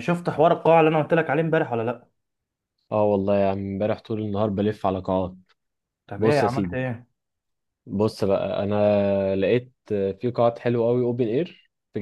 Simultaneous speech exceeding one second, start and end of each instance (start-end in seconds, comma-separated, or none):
none